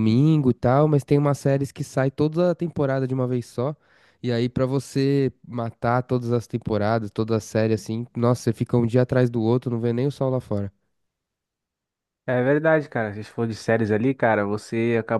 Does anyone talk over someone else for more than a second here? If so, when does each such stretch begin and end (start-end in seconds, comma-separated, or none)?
none